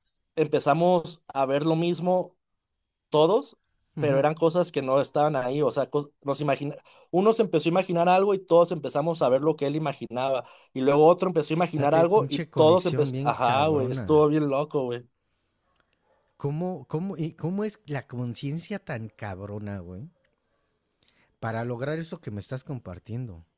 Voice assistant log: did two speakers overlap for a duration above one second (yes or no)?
yes